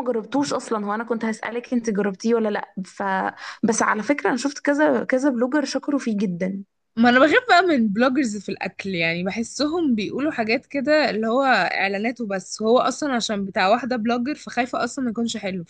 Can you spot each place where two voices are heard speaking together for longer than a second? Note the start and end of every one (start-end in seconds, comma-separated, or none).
none